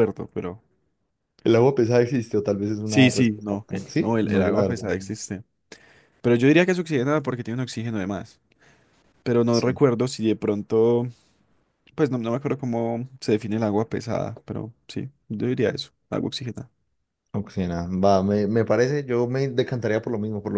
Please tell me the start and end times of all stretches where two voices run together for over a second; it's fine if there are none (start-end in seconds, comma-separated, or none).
2.8-5.1